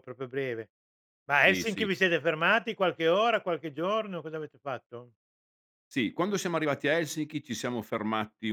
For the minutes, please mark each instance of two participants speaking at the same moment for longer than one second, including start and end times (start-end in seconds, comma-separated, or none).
none